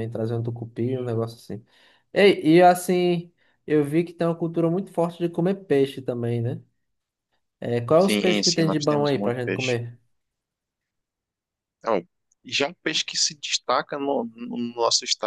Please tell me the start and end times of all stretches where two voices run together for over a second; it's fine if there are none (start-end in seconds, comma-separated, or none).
8.0-9.8